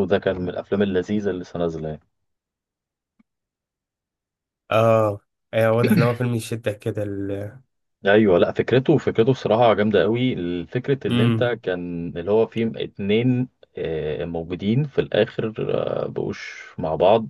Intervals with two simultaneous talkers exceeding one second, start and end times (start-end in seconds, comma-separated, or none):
none